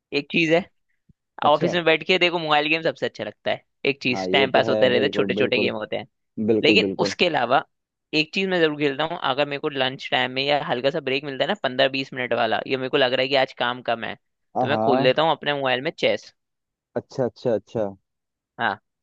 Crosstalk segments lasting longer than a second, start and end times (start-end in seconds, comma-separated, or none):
4.1-5.7